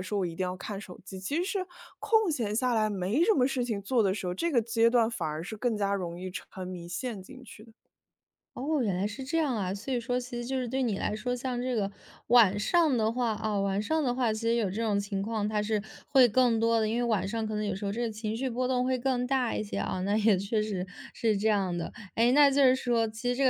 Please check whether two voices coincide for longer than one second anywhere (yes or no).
no